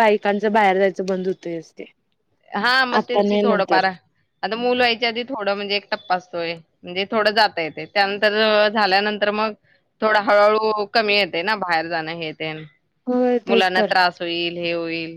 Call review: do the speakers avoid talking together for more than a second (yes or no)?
yes